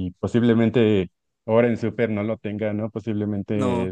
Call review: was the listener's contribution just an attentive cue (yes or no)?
yes